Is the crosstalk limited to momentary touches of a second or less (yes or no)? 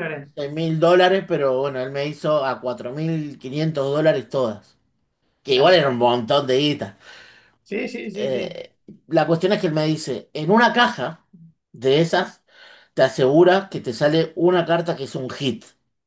yes